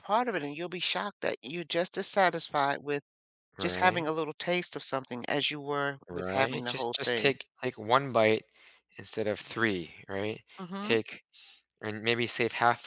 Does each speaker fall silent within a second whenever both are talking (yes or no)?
no